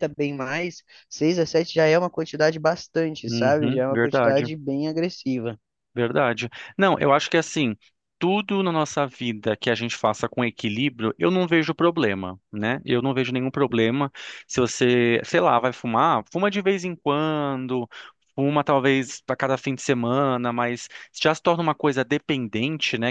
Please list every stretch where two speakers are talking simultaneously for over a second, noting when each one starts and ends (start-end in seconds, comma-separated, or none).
3.2-4.5